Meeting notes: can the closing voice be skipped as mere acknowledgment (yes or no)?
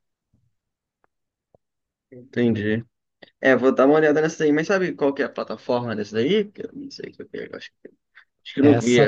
no